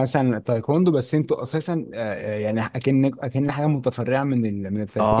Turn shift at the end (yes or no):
yes